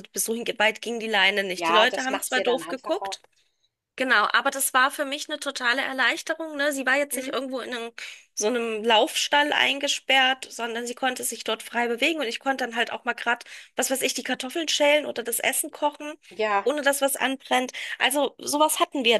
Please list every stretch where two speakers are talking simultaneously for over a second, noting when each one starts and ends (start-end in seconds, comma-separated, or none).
1.6-3.2